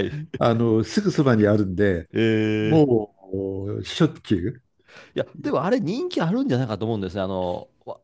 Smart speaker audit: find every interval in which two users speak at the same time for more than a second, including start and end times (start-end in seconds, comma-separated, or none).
none